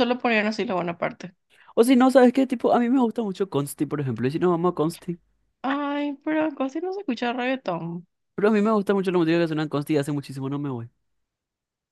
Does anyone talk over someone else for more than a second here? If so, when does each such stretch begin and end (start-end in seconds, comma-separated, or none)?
none